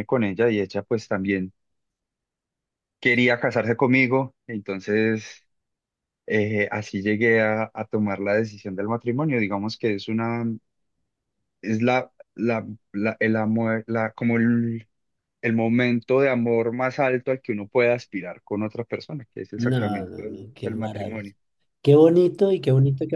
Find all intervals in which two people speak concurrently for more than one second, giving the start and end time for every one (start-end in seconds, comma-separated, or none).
19.6-21.3